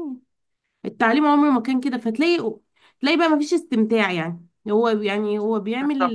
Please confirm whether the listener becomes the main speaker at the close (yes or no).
no